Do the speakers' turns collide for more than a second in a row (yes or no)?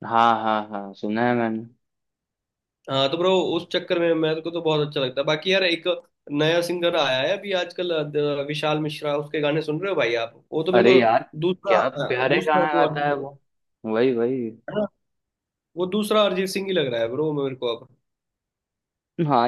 yes